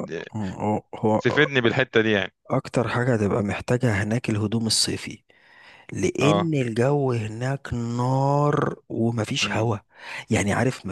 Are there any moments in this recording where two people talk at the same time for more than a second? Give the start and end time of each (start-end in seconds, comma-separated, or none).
none